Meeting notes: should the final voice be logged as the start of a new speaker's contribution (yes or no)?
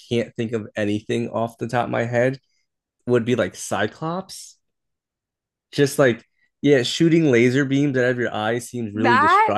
no